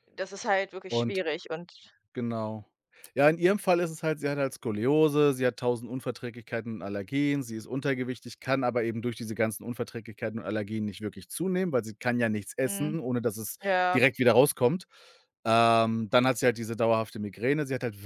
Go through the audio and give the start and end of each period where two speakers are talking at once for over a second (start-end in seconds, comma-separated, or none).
none